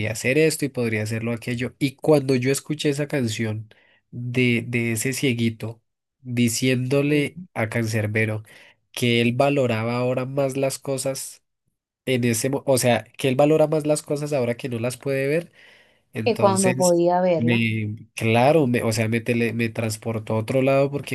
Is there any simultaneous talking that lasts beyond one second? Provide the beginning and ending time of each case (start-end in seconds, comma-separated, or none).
16.2-17.7